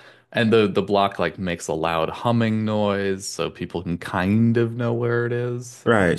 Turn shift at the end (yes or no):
yes